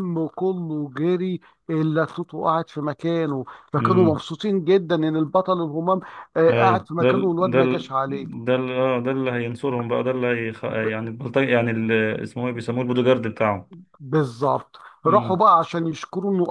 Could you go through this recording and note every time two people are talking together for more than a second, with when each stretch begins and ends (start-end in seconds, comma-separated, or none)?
6.5-7.9